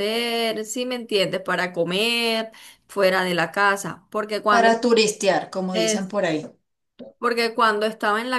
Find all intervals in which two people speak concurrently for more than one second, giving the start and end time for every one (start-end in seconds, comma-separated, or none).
none